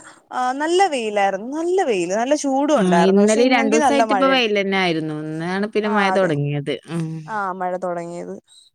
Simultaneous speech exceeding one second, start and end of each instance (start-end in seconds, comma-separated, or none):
2.8-4.5